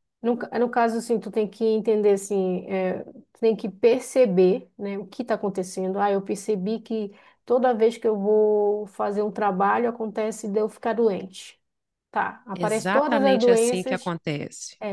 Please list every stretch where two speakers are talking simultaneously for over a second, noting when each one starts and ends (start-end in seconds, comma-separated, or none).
12.5-14.2